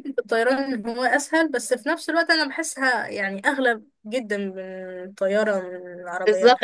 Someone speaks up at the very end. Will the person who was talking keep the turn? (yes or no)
no